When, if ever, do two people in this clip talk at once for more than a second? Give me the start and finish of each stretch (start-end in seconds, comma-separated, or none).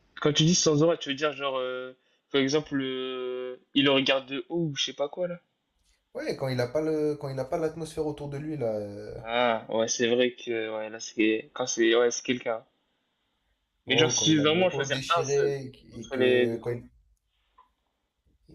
13.9-16.6